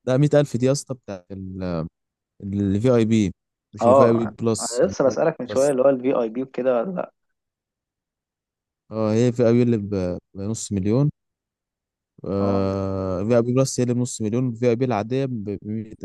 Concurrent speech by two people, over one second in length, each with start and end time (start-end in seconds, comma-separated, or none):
3.8-5.7